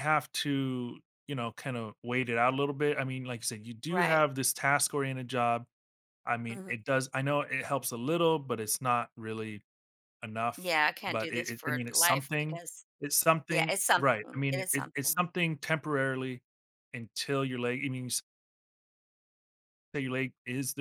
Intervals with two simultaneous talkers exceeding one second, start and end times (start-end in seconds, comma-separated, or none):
10.6-12.6, 13.5-15.2